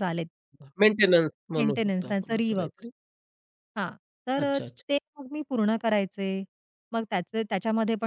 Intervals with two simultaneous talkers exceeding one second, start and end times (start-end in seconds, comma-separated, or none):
1.6-2.8